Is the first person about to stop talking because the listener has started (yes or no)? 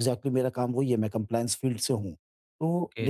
yes